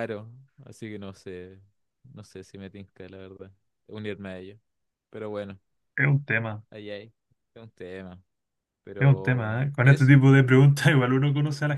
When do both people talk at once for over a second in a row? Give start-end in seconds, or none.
9.0-10.2